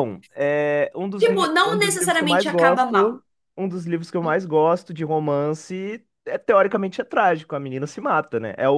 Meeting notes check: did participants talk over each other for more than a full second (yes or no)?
yes